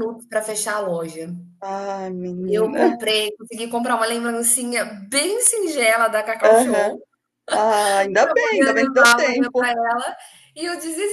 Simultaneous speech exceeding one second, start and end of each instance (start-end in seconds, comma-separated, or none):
8.0-9.8